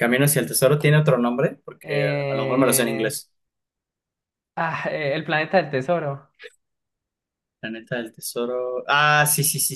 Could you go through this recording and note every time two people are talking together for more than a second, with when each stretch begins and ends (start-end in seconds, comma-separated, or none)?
1.8-3.1